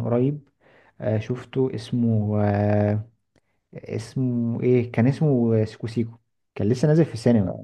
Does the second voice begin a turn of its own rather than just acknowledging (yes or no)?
no